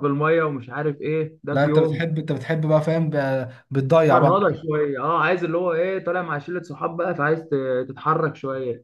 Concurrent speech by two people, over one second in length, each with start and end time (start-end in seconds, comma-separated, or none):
none